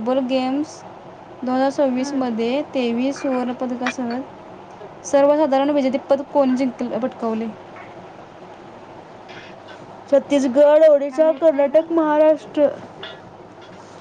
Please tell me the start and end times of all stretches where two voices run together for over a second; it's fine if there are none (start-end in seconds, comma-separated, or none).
11.1-12.5